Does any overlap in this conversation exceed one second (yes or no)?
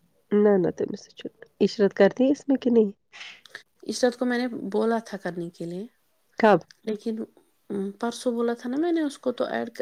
no